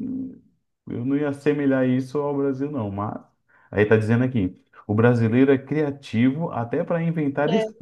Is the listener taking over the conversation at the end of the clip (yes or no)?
no